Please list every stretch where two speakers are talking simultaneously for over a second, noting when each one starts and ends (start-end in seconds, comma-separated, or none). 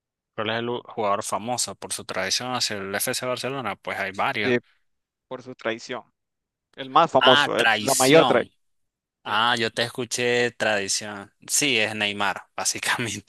7.2-8.5